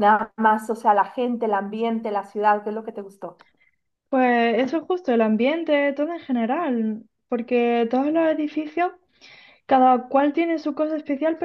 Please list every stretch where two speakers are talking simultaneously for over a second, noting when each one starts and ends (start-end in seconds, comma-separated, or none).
none